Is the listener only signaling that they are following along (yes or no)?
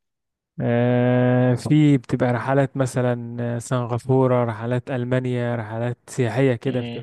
yes